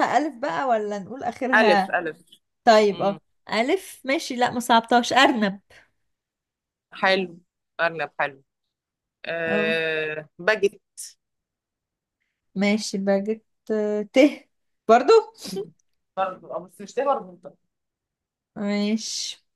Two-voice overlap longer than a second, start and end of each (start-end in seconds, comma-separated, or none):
none